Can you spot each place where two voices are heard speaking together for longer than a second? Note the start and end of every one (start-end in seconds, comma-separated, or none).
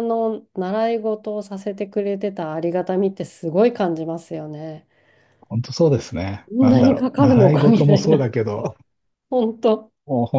6.6-8.2